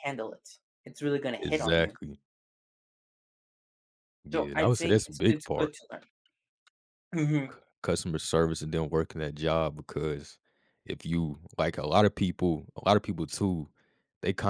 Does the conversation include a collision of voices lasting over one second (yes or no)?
yes